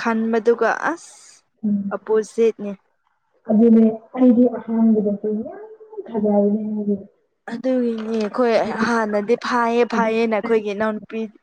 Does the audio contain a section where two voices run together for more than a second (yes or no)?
no